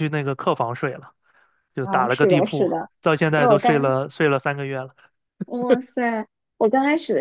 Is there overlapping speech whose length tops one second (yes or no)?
yes